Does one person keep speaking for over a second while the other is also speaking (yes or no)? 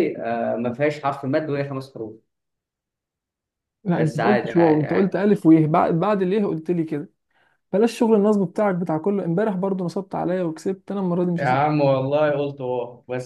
yes